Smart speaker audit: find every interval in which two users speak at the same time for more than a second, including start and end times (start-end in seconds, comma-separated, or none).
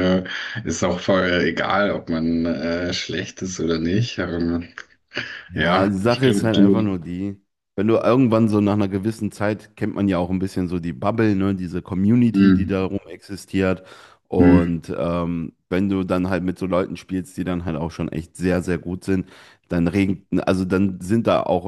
5.5-7.0